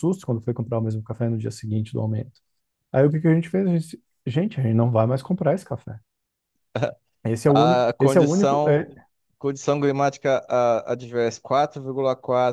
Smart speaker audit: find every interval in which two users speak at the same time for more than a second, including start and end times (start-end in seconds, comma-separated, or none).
7.5-8.9